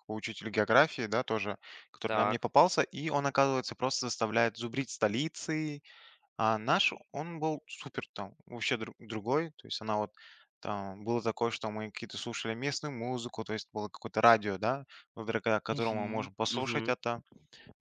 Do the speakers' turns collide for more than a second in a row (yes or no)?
yes